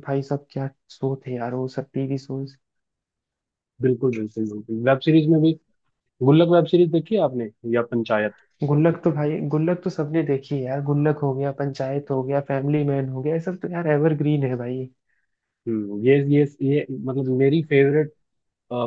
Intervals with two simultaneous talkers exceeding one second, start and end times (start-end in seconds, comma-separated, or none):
none